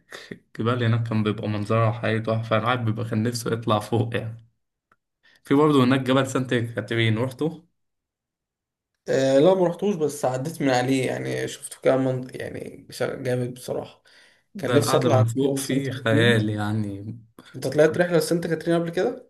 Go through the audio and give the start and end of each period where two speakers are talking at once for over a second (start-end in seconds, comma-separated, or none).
14.6-16.5